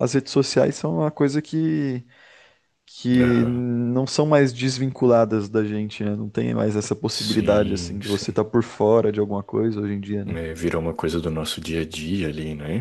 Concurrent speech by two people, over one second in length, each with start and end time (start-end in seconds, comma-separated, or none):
7.1-8.4